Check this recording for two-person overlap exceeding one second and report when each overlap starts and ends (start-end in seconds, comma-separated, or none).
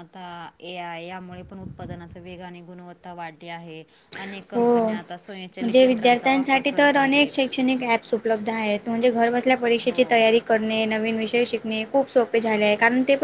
5.6-7.4